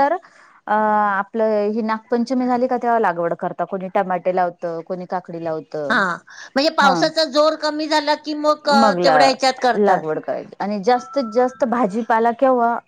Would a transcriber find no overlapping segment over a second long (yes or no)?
yes